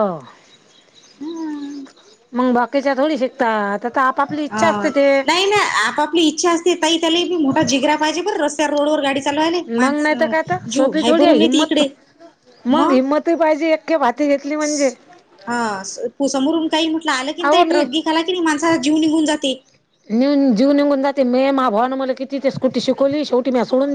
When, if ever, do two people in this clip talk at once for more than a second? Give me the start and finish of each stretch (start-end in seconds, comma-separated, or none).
9.8-11.8